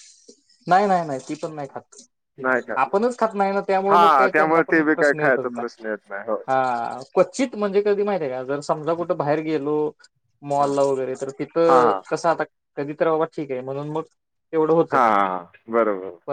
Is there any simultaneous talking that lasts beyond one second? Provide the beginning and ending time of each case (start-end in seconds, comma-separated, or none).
3.9-5.9